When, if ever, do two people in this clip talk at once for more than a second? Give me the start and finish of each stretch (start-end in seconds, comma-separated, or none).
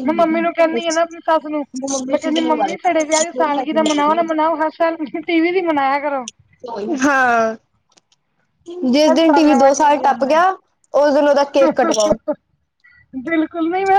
9.1-10.5